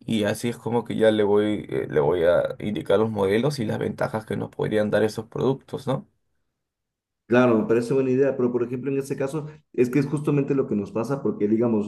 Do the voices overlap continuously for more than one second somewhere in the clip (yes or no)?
no